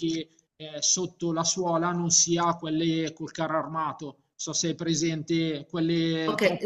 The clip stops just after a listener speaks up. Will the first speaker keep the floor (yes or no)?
no